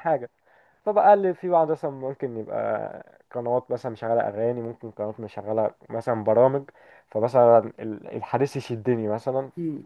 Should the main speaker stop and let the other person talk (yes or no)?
yes